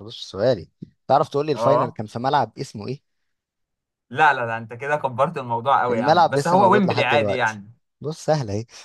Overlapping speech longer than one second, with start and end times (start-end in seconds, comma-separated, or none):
5.9-7.6